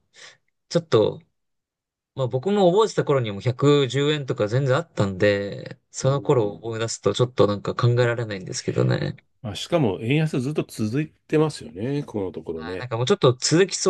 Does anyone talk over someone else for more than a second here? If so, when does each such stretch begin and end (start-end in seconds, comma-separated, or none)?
none